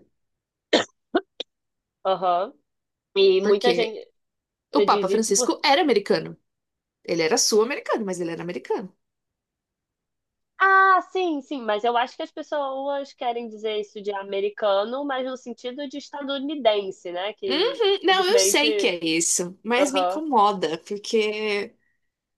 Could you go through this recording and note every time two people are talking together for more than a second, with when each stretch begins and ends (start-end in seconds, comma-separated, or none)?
17.5-18.9